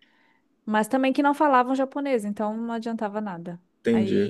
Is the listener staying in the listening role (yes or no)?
yes